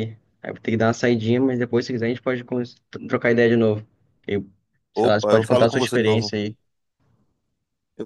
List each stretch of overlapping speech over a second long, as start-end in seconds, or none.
4.9-6.3